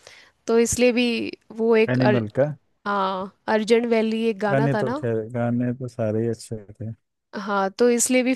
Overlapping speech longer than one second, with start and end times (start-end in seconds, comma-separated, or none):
none